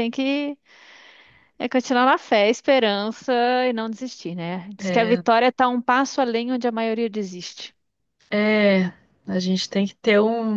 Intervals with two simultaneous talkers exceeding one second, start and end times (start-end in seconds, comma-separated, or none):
none